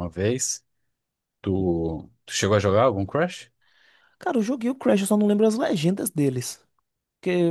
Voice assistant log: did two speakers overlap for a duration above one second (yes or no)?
no